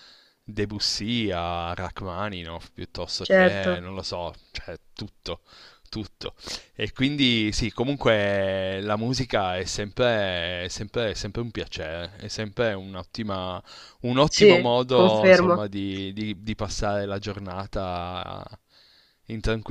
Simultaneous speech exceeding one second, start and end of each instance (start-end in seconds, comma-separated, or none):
14.3-15.6